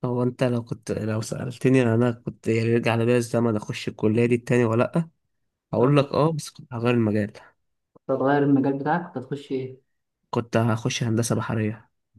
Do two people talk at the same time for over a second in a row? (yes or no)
no